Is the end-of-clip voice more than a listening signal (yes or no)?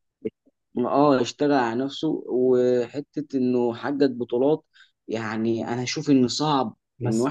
no